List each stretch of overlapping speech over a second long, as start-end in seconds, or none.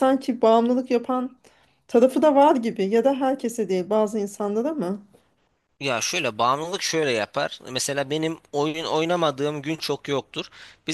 none